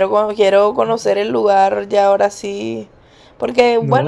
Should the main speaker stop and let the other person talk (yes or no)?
no